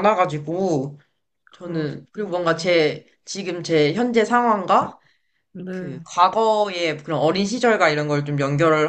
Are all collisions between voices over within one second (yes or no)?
no